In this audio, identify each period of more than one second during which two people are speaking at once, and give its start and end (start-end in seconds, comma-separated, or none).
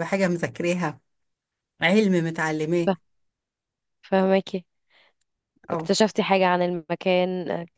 none